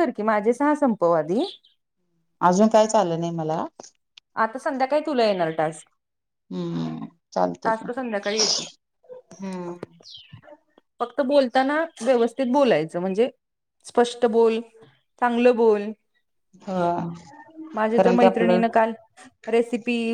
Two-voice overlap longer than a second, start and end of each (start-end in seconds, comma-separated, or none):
none